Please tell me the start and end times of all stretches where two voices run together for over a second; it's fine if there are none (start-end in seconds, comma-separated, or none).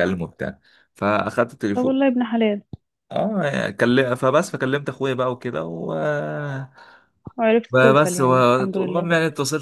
7.7-9.1